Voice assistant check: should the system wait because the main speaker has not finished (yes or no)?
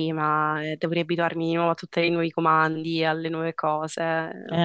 no